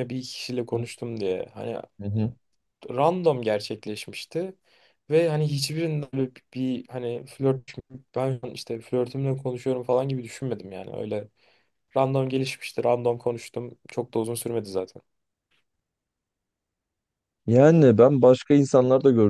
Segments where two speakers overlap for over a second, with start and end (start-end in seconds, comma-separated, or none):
none